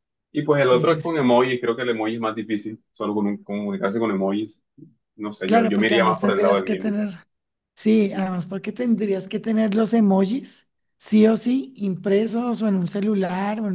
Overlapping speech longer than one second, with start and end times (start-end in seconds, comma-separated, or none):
5.4-6.9